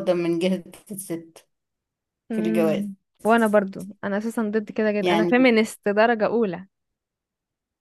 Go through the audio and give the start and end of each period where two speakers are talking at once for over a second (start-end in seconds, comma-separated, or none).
none